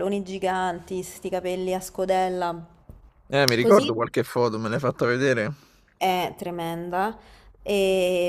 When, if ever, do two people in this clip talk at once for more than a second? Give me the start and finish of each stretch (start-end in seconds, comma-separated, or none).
none